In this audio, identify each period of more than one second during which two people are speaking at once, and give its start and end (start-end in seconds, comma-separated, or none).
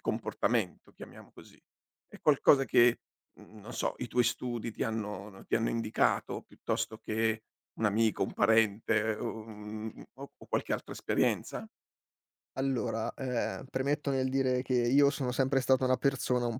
none